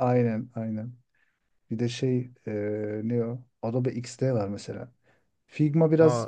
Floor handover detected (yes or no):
no